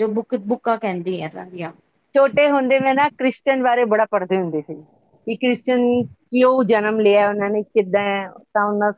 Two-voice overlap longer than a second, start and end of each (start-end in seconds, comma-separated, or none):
none